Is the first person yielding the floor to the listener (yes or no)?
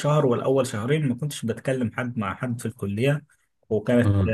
no